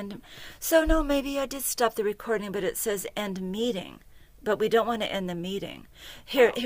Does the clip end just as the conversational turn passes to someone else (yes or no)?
no